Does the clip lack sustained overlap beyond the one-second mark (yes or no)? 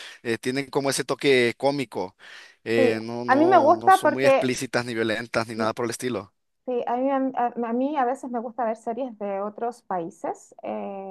no